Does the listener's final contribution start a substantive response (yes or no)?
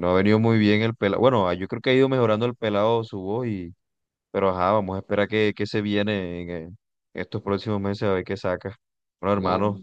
no